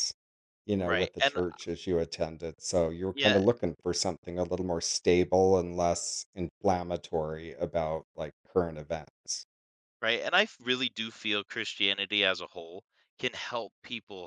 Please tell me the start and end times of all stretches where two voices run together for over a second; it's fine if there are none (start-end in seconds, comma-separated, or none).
none